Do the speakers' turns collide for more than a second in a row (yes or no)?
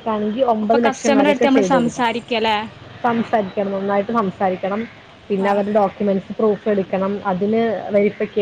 yes